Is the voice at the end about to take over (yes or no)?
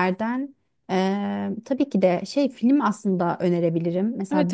yes